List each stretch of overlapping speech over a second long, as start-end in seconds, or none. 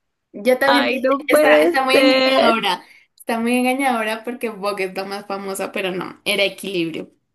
0.7-2.5